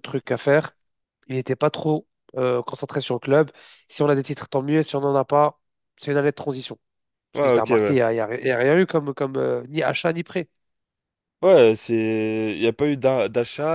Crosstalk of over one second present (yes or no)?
no